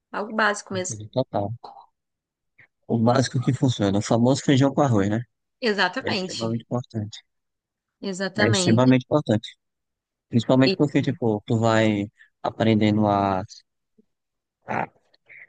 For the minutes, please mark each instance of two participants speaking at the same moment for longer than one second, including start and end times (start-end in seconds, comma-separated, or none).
none